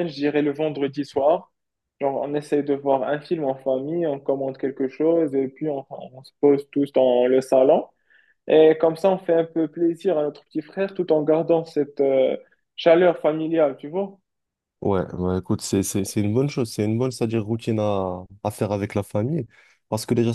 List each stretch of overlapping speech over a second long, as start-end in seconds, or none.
none